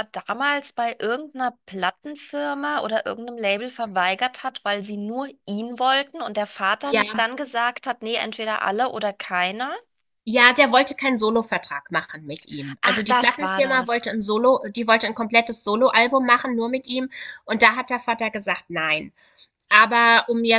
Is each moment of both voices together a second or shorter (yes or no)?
no